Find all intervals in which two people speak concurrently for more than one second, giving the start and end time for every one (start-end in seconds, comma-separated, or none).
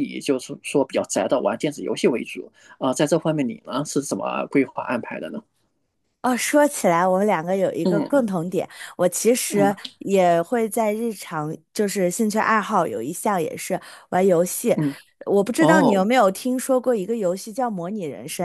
none